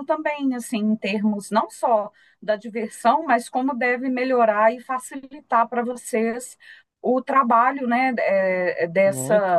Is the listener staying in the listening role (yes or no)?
yes